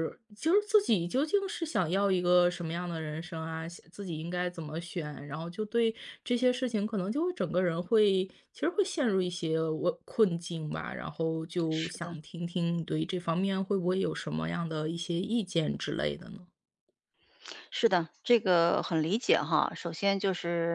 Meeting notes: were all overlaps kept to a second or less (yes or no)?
yes